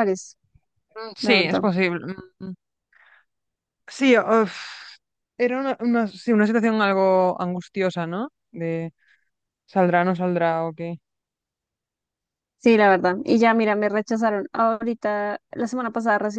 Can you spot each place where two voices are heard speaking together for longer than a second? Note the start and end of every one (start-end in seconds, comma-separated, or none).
none